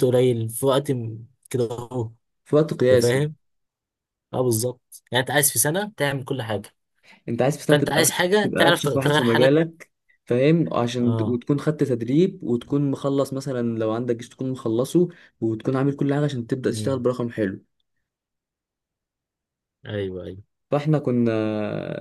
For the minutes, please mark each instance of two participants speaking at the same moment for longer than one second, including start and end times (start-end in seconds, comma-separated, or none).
7.7-9.6